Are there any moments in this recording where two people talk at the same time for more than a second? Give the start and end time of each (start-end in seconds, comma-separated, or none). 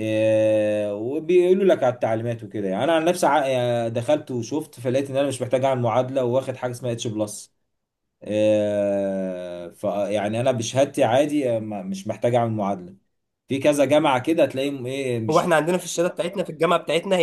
none